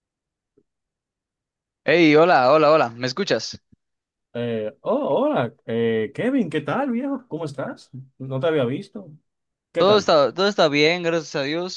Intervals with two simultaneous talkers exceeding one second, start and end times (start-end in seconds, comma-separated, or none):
none